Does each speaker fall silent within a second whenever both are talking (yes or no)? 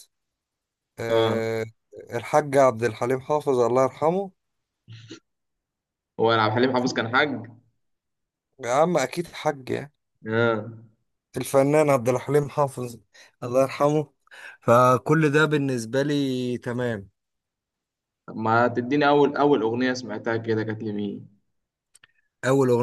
yes